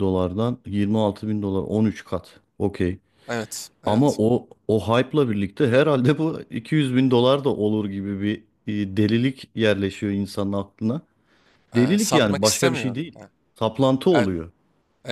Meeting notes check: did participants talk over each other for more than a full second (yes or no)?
yes